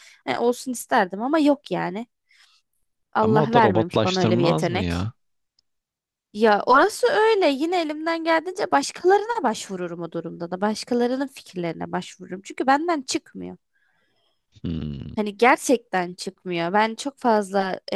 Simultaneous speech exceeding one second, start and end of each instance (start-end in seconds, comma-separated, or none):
3.2-5.1